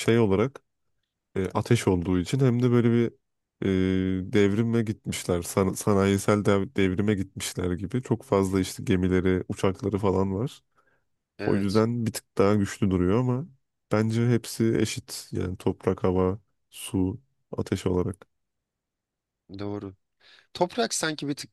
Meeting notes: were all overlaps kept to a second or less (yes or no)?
yes